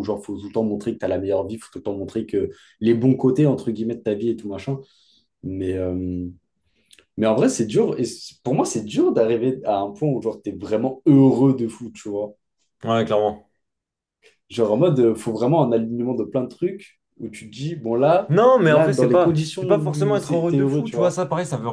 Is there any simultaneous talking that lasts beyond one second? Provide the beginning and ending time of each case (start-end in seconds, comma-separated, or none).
18.6-21.2